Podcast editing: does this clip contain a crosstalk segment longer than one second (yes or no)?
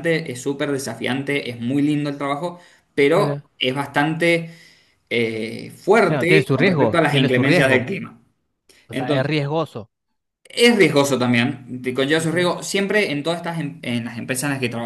yes